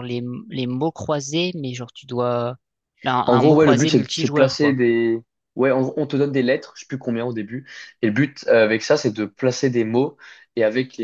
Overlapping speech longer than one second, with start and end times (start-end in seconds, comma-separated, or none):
3.2-4.8